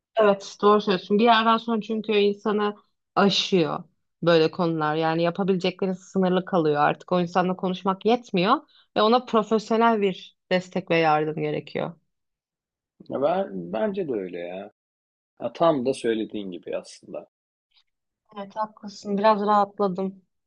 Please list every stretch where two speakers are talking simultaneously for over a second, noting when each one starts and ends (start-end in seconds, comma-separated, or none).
none